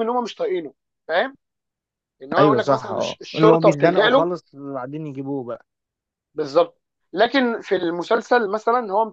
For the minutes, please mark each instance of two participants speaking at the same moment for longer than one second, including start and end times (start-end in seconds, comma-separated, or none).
2.4-4.3